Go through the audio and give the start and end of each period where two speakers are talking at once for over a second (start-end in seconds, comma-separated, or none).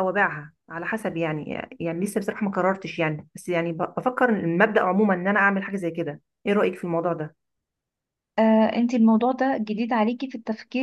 none